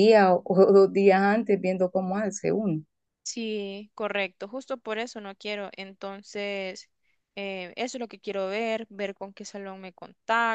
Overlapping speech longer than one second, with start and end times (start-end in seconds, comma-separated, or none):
none